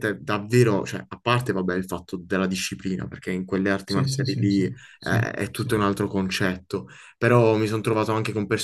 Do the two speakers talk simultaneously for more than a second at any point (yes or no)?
yes